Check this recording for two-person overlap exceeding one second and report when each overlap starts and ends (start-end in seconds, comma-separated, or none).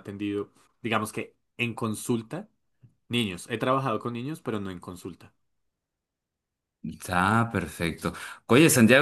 none